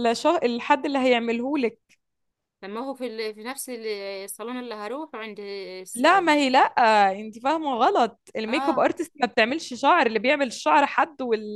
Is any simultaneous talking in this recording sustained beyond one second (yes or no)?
no